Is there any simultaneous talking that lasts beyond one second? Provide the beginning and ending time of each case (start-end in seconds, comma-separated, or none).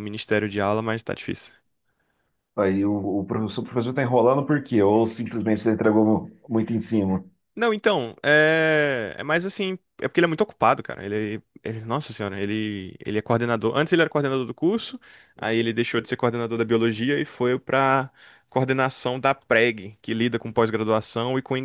none